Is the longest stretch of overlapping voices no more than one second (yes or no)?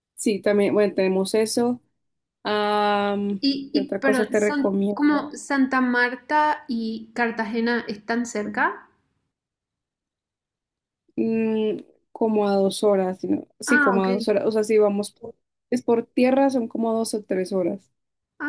no